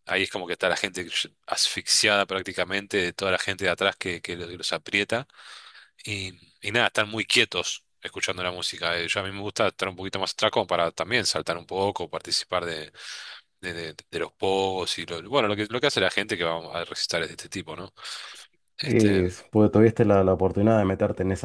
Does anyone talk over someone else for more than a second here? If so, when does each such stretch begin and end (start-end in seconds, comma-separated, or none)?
none